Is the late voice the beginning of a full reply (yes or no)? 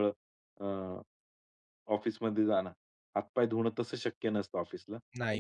no